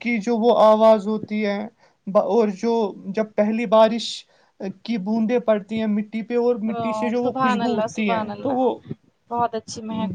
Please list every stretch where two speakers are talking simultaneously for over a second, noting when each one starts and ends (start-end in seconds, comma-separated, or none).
7.2-8.7